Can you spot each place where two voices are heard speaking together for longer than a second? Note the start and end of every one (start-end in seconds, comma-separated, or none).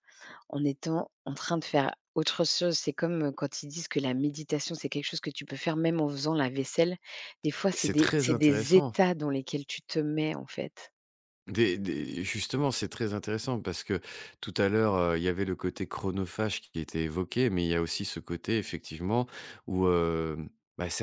7.7-8.9